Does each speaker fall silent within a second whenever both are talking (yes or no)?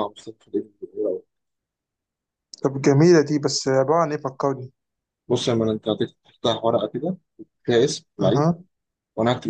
yes